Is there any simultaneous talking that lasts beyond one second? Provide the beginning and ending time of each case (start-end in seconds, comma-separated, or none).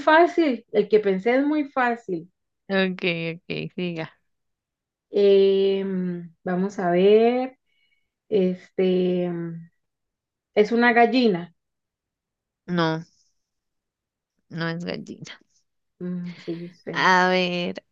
none